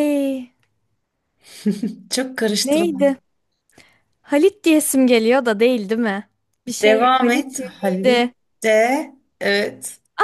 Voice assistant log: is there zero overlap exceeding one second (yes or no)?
no